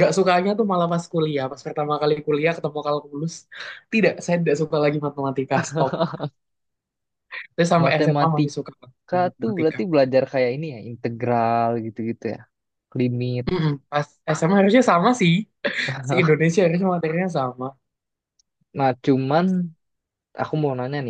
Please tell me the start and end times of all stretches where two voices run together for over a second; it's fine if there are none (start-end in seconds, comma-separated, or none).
7.8-9.8